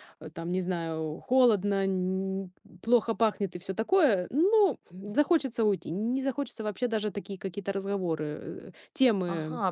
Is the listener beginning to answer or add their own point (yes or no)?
yes